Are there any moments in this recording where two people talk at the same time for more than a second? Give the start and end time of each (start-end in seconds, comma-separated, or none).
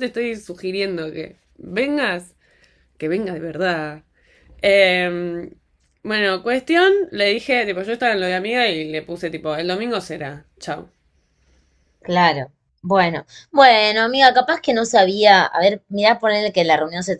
none